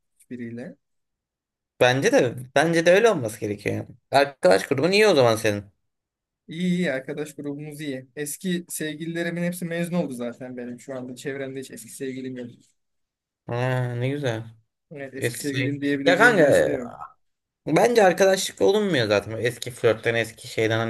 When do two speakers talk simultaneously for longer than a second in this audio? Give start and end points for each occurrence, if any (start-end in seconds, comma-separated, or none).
15.2-16.8